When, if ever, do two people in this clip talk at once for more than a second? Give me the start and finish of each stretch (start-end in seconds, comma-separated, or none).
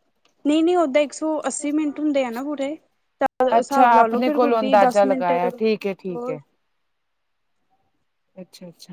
3.6-6.4